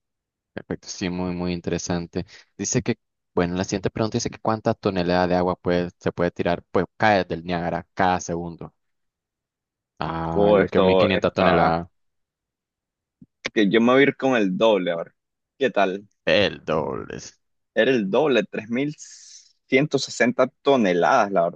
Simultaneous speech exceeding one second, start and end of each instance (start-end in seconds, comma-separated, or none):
10.3-11.8